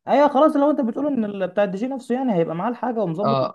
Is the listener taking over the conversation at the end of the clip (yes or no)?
yes